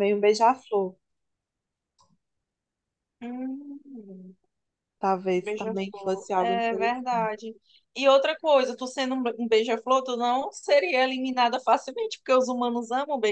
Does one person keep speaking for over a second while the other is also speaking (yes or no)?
yes